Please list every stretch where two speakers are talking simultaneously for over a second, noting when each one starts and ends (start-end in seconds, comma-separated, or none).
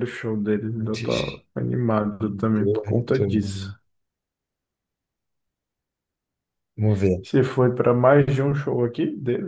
2.2-3.7